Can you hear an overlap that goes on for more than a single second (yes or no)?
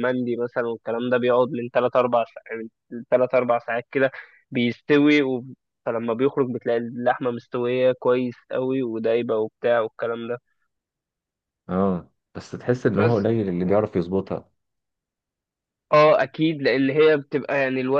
no